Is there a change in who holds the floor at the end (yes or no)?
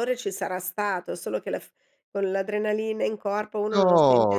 yes